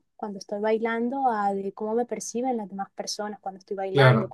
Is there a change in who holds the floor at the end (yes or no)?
no